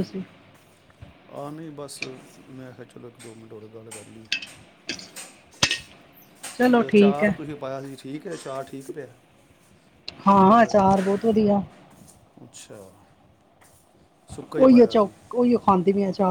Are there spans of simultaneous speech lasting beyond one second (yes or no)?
no